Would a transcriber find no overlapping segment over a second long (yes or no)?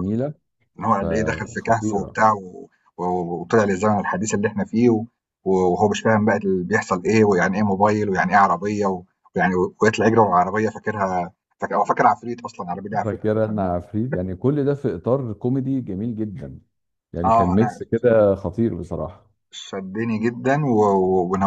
no